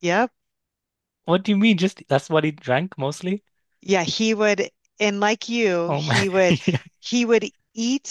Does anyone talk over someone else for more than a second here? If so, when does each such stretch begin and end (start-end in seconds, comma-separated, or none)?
none